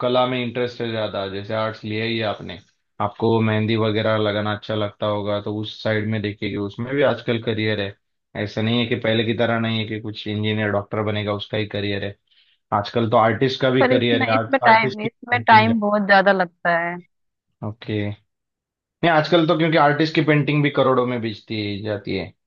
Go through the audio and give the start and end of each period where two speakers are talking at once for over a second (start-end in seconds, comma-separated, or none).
13.8-15.7